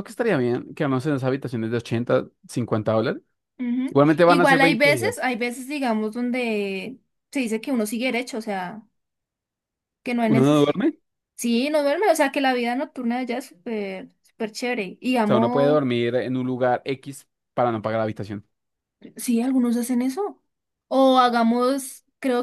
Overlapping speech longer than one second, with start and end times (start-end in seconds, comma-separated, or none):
3.9-5.3